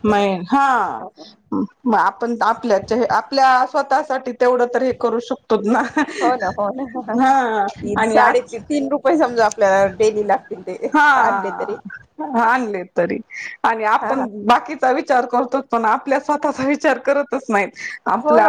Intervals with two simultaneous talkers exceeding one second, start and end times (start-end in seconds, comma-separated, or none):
none